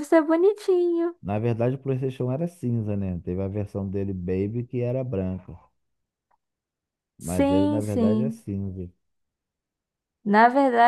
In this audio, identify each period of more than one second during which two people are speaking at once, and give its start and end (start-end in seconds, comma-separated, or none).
7.2-8.4